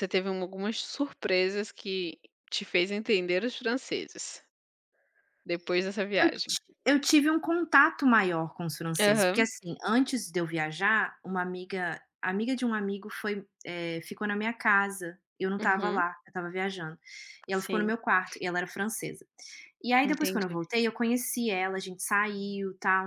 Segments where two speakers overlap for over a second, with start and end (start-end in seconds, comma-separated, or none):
none